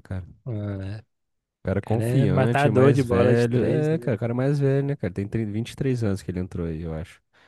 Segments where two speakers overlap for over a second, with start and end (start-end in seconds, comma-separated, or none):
1.8-4.2